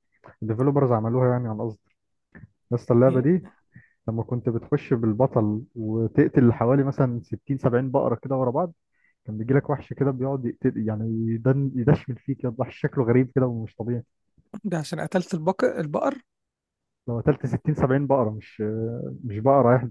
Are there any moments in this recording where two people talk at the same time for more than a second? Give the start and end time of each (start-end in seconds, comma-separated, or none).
none